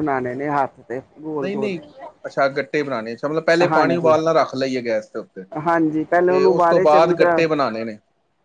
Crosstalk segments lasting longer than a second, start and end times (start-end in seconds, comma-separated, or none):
5.7-7.4